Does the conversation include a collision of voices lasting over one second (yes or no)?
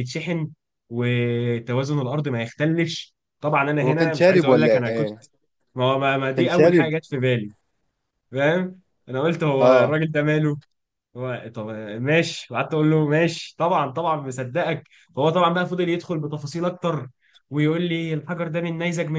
yes